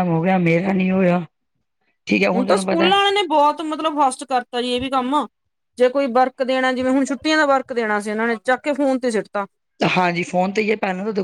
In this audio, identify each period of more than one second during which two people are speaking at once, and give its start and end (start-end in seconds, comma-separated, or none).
none